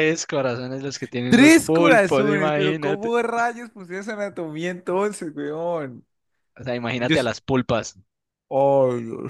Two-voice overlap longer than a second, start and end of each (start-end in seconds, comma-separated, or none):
1.3-3.1